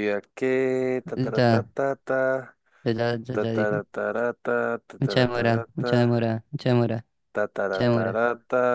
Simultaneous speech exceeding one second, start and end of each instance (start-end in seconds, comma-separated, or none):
none